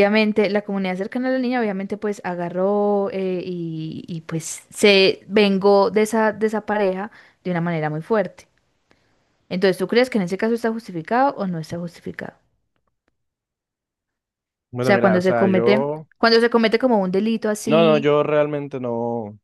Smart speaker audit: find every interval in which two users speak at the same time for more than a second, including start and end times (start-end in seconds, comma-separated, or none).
14.8-16.1